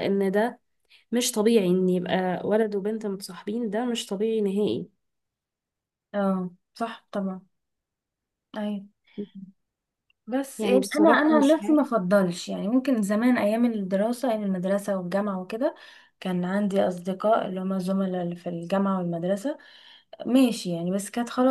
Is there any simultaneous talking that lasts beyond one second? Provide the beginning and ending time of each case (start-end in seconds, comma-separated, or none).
10.6-11.8